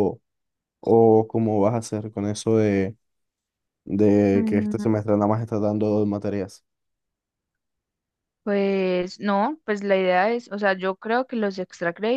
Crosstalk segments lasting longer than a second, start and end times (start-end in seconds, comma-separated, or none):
none